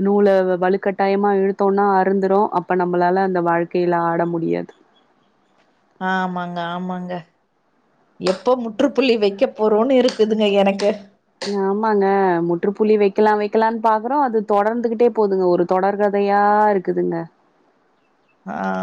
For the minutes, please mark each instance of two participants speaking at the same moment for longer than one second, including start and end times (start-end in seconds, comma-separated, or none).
none